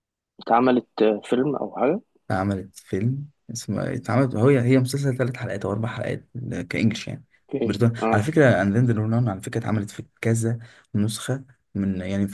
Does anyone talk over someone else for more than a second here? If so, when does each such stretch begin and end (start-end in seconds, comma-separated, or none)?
none